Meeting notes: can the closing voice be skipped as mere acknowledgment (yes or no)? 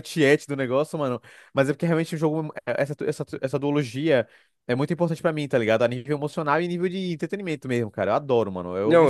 no